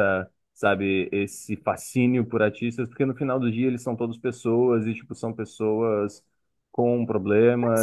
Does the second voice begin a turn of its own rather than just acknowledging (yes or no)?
yes